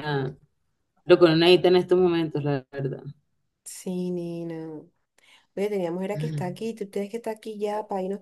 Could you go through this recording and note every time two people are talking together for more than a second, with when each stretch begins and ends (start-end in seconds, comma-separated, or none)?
none